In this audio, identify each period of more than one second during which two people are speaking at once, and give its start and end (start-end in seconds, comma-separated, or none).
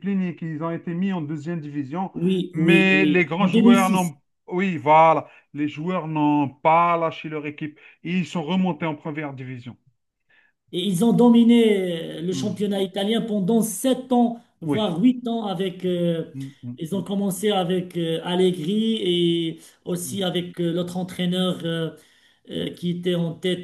2.5-4.1